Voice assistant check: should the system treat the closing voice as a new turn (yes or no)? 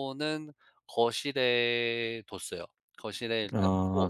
no